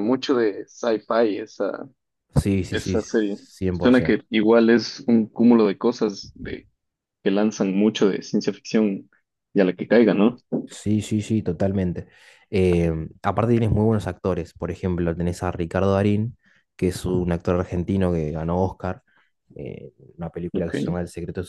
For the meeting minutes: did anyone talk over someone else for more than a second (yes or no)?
yes